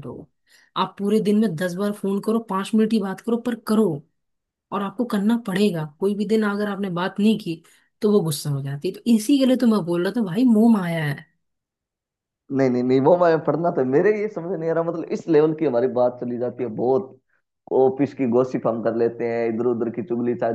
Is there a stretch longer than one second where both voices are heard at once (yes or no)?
no